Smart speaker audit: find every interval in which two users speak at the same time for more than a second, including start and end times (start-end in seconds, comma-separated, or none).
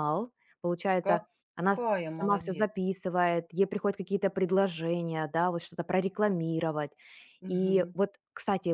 1.1-2.9